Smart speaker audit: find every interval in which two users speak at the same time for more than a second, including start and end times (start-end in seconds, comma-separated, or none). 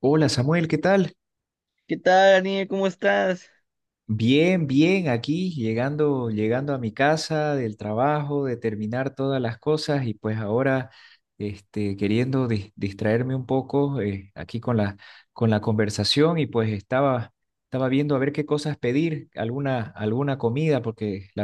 none